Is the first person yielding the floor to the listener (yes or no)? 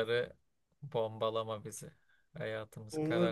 yes